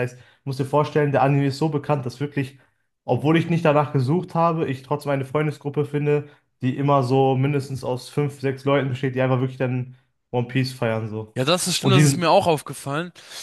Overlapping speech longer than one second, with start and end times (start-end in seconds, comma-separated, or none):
none